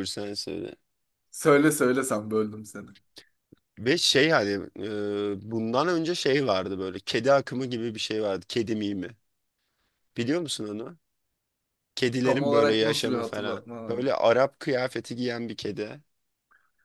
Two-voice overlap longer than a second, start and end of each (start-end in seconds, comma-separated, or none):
12.2-14.0